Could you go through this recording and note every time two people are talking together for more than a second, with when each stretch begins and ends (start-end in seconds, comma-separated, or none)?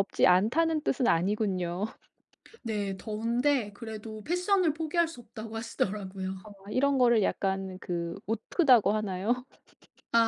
none